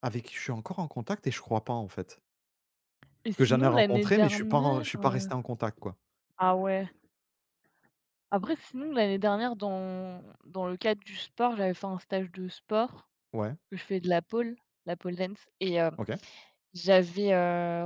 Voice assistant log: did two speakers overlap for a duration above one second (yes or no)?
yes